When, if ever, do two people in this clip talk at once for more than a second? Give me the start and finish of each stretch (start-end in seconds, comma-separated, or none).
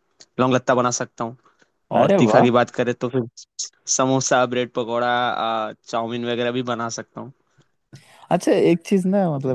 none